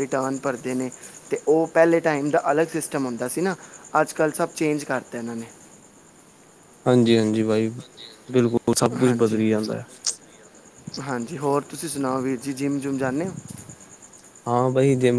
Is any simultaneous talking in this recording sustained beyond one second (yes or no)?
no